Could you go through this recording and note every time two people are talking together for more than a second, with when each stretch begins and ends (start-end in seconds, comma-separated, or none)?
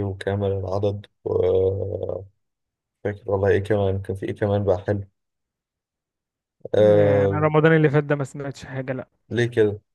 none